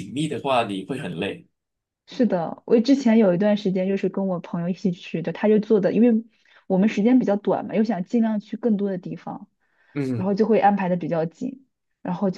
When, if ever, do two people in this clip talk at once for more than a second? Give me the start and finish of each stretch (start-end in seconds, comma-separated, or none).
none